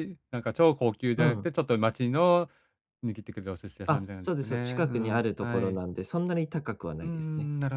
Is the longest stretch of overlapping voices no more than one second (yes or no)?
no